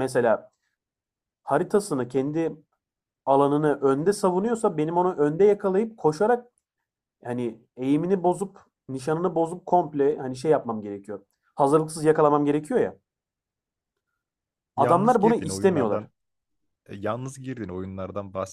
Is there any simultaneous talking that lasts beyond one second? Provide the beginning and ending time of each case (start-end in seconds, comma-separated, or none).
14.8-16.1